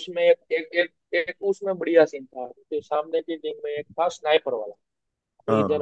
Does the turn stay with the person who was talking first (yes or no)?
yes